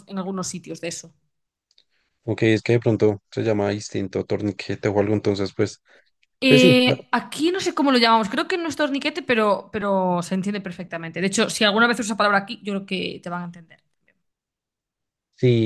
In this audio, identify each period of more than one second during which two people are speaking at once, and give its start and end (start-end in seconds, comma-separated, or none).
none